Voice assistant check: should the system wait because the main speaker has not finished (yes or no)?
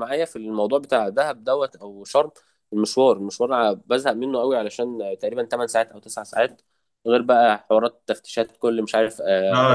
no